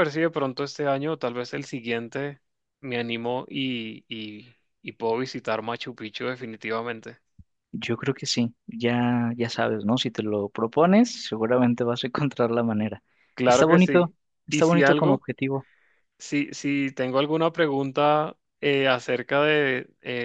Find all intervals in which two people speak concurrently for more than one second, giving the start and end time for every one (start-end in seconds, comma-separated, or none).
13.4-15.2